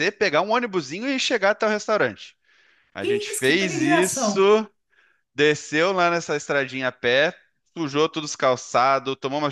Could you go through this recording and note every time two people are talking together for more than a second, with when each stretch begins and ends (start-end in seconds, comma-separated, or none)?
3.0-4.5